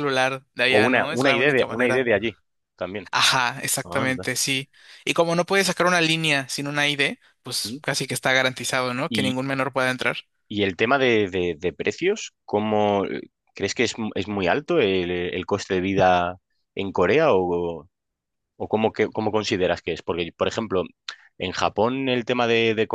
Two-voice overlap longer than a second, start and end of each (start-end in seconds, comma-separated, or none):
0.7-2.1